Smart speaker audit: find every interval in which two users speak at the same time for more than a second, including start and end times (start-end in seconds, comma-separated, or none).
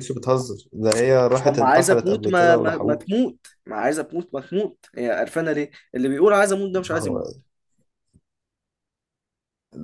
1.4-3.0